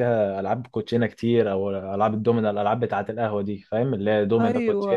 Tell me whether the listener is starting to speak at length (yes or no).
yes